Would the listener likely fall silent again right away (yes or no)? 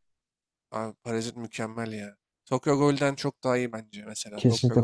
no